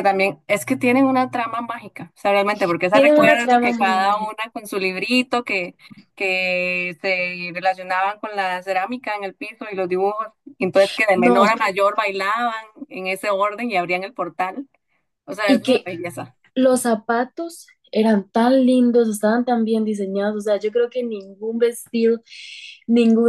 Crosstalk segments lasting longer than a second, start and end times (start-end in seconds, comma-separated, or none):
2.9-4.3